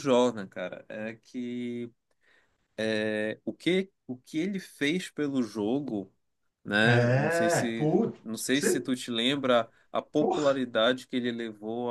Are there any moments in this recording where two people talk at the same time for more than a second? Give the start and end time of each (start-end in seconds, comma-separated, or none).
6.8-8.9